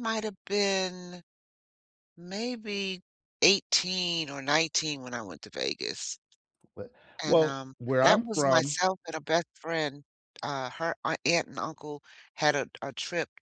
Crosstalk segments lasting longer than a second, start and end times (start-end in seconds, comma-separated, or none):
7.2-8.8